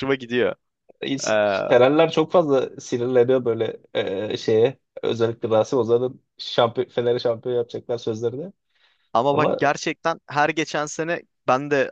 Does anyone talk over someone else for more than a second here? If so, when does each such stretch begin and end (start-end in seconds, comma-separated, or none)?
none